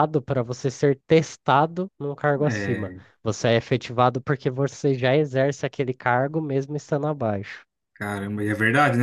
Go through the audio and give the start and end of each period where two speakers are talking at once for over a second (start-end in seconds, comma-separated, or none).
none